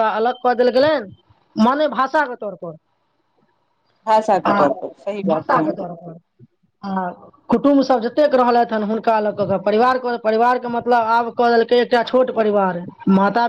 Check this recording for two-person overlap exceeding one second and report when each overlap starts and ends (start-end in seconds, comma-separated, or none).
none